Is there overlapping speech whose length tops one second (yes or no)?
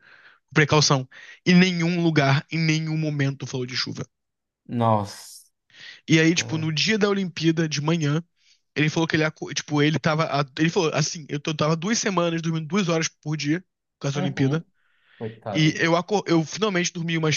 no